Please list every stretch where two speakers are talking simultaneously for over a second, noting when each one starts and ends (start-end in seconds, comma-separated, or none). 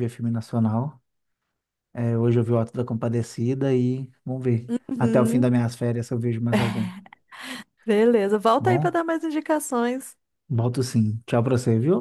none